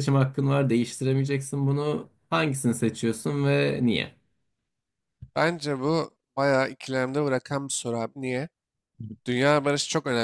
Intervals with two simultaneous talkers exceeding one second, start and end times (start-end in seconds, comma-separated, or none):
none